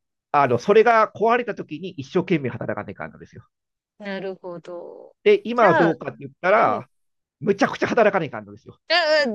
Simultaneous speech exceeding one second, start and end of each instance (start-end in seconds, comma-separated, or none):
none